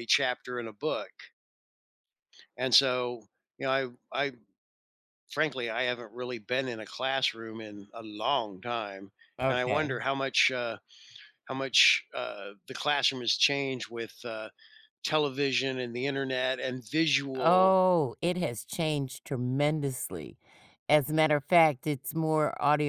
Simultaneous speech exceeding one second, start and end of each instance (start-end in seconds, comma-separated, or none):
none